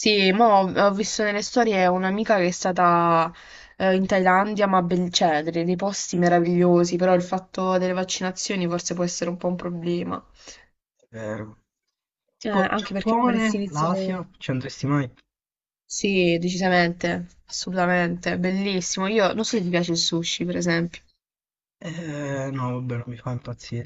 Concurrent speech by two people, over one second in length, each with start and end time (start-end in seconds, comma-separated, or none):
12.4-14.2